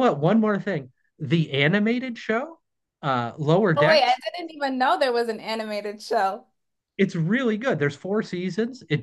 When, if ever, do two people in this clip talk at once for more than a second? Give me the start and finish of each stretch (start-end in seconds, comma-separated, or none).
none